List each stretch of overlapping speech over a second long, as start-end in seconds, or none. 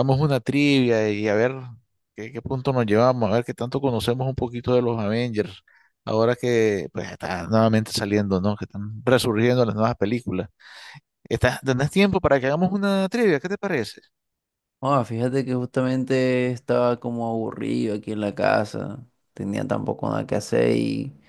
none